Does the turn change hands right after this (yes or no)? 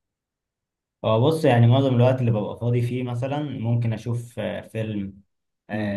no